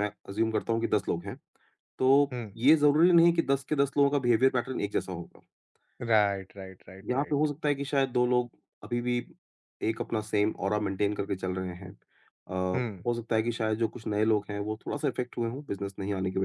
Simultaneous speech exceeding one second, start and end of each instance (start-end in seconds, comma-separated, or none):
none